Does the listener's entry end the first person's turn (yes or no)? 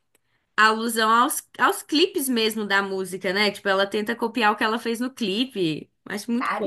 yes